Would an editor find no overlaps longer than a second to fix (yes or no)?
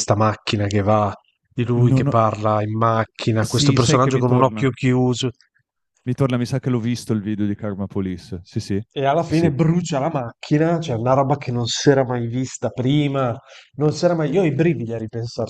no